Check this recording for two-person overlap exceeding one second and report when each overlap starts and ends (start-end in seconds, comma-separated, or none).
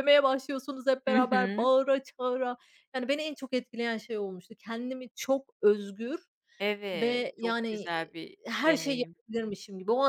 6.9-9.1